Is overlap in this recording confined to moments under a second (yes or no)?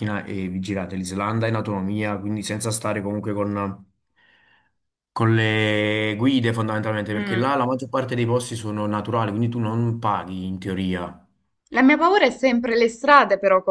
yes